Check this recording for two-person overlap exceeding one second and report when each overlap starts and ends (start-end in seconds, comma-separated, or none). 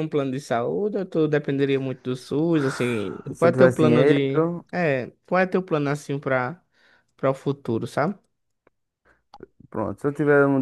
3.3-4.6